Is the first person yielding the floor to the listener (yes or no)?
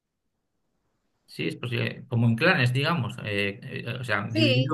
no